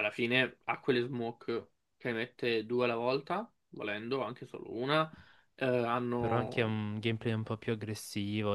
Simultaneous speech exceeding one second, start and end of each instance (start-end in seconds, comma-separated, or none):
none